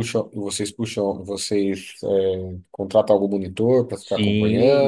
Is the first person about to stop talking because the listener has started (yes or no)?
yes